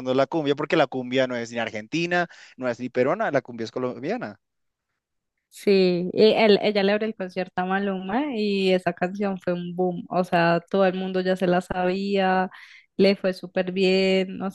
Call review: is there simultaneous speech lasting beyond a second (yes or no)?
no